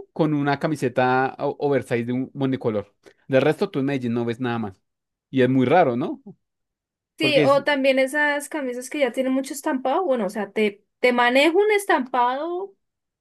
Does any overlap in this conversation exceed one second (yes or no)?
no